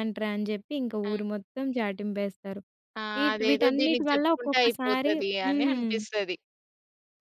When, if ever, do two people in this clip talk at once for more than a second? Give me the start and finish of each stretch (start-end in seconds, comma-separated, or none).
3.2-5.9